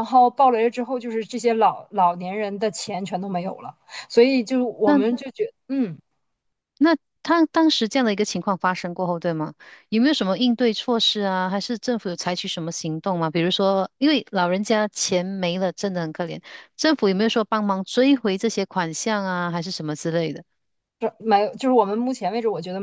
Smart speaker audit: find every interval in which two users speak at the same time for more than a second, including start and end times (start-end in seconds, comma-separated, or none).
none